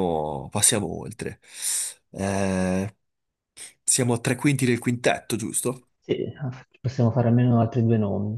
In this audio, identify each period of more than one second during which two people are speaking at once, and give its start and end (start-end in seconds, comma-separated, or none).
none